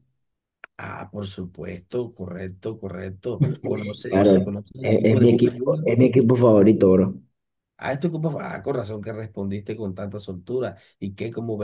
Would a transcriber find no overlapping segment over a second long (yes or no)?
no